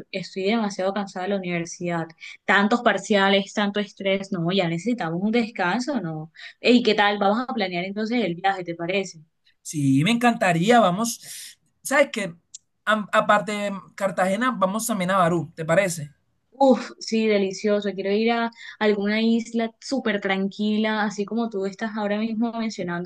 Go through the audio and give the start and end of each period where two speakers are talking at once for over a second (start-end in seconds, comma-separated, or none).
none